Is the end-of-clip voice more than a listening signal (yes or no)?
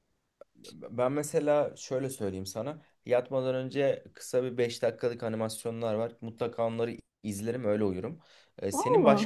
no